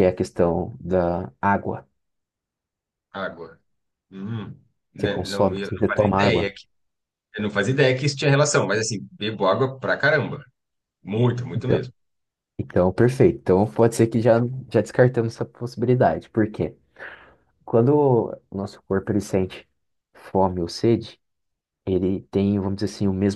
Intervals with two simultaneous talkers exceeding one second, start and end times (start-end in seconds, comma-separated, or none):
5.0-6.5